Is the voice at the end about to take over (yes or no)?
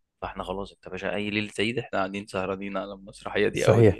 yes